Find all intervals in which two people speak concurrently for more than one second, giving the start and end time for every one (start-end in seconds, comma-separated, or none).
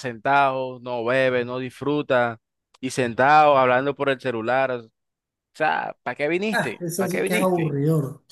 6.5-7.7